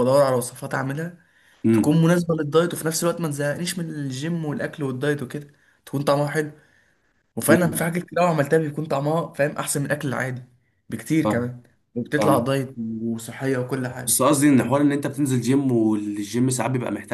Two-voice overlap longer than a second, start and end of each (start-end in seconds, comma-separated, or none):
none